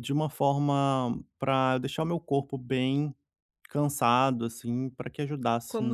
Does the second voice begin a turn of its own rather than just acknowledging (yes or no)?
yes